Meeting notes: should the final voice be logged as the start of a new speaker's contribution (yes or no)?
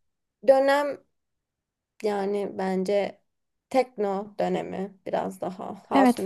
yes